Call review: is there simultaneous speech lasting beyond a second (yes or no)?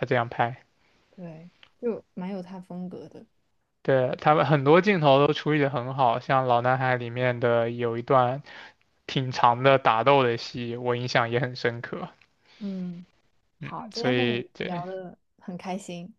yes